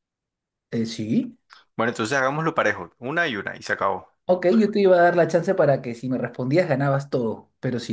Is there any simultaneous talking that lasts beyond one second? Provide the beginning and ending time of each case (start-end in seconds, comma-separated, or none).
none